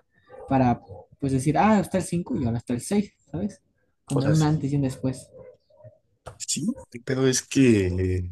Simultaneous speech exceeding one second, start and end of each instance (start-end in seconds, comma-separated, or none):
none